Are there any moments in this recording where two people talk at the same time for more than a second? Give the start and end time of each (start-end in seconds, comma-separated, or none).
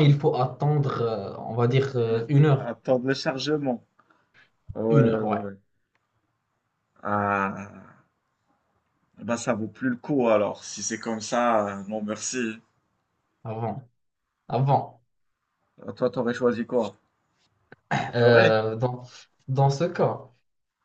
none